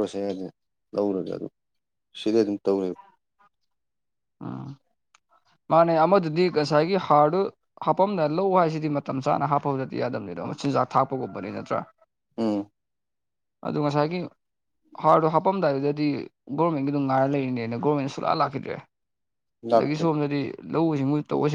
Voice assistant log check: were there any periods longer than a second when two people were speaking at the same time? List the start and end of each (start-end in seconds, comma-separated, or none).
none